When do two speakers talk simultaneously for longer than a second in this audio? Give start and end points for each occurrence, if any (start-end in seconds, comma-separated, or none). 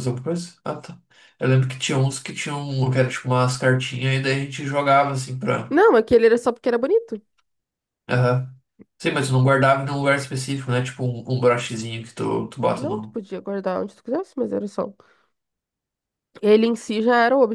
none